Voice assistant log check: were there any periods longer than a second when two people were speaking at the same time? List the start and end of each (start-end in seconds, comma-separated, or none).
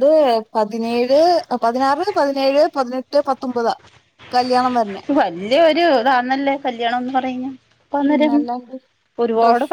none